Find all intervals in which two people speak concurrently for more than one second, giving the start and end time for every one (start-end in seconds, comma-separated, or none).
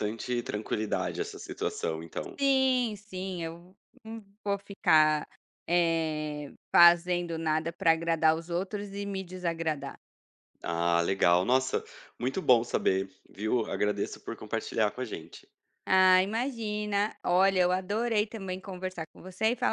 none